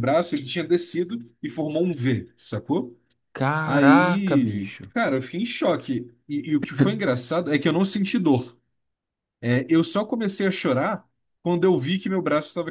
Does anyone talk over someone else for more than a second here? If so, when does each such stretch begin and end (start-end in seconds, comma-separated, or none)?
3.6-4.9